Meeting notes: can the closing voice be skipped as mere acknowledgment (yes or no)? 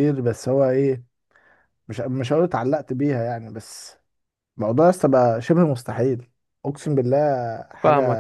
no